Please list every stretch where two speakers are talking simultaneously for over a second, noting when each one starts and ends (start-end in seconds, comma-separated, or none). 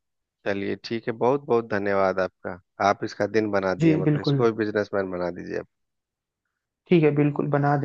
none